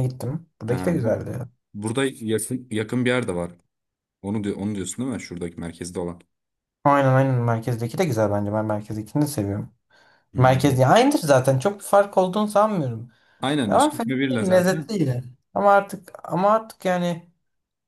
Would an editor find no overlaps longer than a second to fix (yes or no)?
no